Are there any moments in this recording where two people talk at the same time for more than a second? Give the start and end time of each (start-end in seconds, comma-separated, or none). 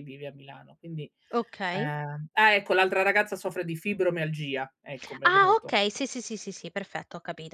none